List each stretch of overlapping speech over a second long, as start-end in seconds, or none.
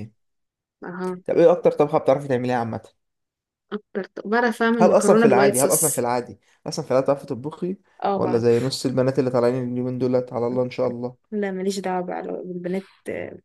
4.8-6.1